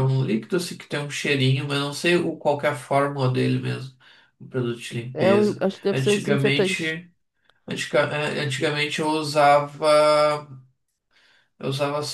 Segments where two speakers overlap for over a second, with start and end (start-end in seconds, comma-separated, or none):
5.1-7.0